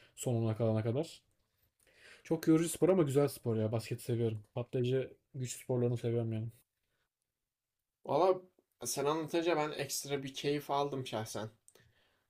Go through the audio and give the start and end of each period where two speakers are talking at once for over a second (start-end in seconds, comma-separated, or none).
none